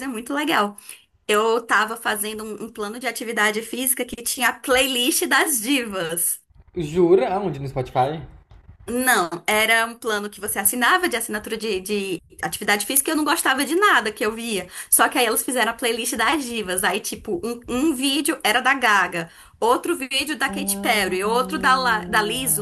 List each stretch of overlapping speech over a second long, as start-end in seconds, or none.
20.5-21.8